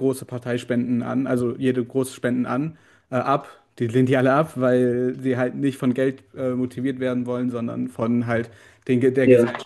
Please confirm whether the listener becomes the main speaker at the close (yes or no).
no